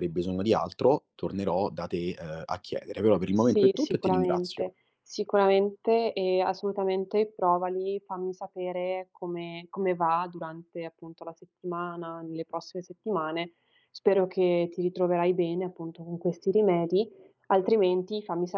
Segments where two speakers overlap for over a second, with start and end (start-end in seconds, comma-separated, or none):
3.3-4.7